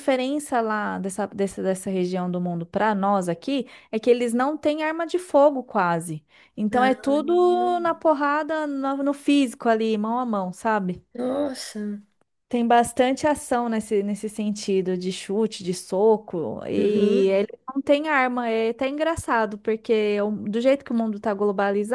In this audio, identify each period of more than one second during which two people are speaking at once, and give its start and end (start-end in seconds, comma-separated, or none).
none